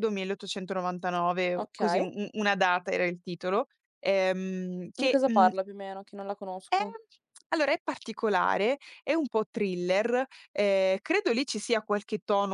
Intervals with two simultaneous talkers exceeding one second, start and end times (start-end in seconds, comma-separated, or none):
none